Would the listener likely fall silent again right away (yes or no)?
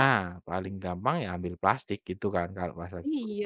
no